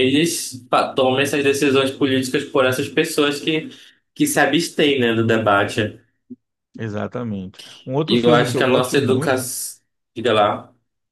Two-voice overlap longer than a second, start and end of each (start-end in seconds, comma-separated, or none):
8.1-9.5